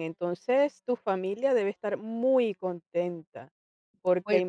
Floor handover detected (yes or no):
no